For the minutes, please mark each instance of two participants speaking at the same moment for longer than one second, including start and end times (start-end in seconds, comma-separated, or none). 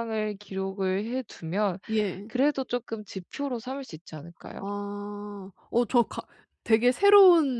none